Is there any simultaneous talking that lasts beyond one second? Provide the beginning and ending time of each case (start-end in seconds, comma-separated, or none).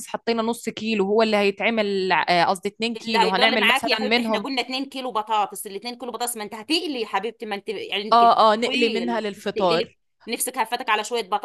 3.0-4.5, 8.1-10.0